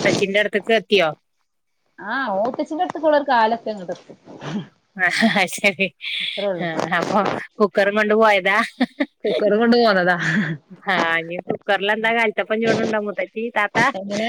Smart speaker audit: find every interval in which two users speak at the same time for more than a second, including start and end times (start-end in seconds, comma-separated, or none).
none